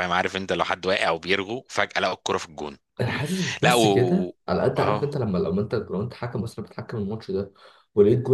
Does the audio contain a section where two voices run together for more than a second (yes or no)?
no